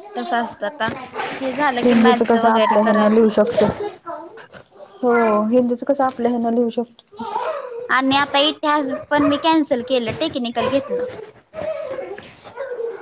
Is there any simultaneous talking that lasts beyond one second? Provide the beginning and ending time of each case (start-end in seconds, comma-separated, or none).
1.8-3.3